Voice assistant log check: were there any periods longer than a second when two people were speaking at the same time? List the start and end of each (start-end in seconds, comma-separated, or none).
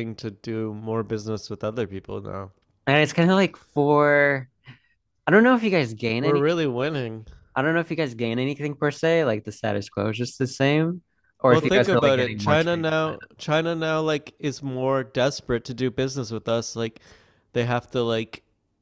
11.5-13.2